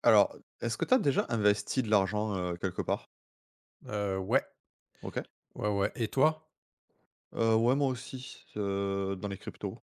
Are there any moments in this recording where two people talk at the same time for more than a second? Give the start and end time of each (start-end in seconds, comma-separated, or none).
none